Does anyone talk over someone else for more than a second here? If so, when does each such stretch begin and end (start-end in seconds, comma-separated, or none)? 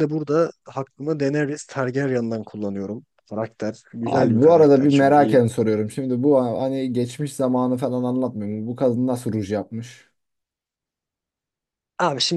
4.0-5.4